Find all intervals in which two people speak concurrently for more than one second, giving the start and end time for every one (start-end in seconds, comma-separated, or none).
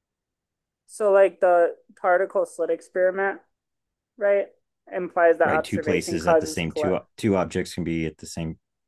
5.4-7.0